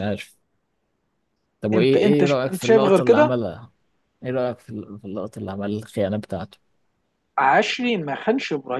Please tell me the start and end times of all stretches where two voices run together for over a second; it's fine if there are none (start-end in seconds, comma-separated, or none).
1.7-3.3